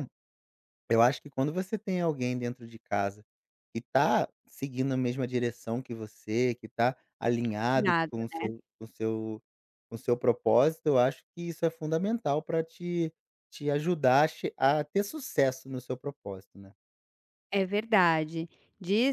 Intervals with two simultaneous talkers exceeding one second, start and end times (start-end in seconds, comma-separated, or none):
none